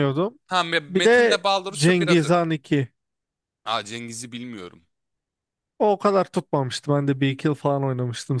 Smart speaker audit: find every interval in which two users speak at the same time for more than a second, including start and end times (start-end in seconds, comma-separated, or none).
0.9-2.4